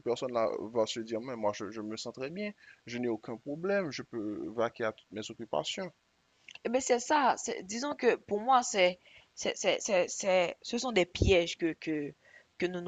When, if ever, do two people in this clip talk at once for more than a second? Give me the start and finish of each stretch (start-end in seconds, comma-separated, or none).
none